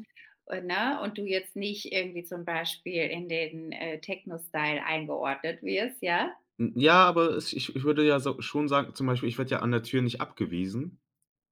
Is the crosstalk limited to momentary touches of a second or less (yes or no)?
yes